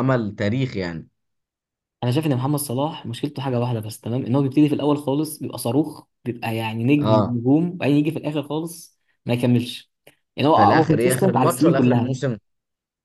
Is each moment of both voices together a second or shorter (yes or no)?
no